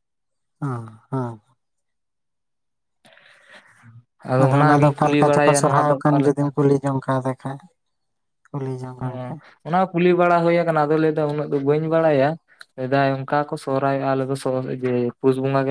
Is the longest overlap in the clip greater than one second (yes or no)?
yes